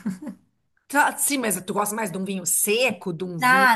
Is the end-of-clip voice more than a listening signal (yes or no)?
yes